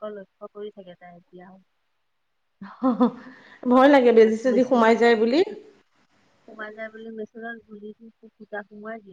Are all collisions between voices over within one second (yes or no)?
no